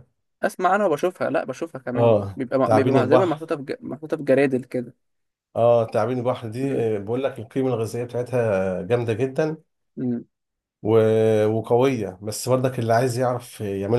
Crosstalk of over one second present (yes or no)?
yes